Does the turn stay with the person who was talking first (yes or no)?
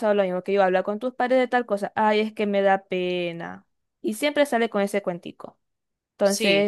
yes